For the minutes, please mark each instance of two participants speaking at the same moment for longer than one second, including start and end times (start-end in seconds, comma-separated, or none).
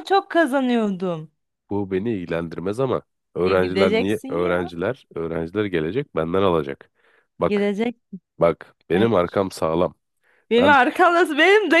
3.4-4.7